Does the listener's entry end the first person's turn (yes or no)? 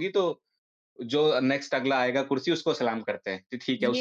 yes